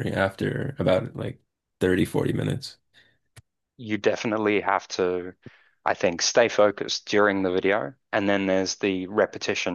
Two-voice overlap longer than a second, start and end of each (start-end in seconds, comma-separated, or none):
none